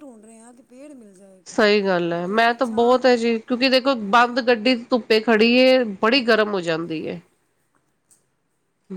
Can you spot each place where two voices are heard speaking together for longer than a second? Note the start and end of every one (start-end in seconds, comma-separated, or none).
1.5-3.0